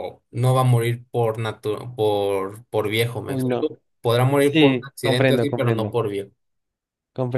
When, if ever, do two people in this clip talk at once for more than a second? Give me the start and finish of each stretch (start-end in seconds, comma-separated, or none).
4.4-5.9